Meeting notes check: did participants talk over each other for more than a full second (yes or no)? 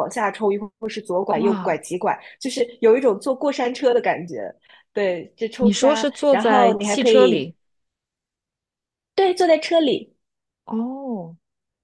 yes